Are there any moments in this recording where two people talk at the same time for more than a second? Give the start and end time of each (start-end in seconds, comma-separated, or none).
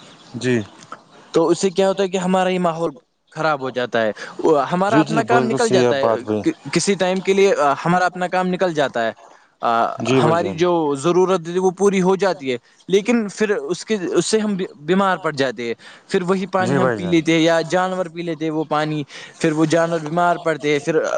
4.9-6.4